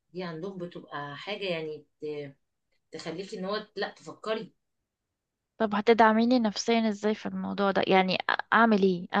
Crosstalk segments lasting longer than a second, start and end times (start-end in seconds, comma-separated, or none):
none